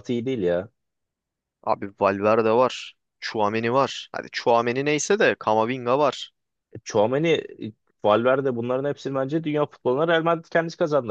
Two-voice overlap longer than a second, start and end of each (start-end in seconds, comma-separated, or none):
none